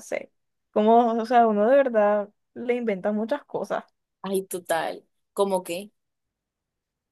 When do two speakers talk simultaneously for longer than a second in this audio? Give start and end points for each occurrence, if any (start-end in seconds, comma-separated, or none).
none